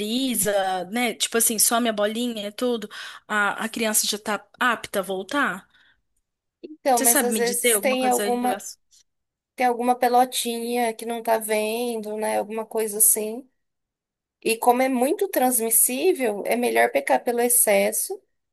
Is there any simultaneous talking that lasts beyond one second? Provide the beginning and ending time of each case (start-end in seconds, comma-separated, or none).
7.0-8.6